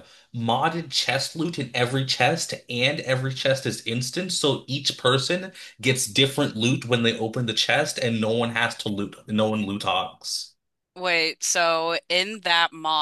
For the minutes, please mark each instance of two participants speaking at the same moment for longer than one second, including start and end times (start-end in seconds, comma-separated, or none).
none